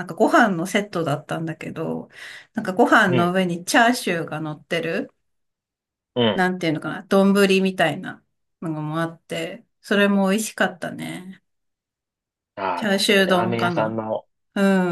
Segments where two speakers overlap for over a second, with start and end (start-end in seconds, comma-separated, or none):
12.7-14.0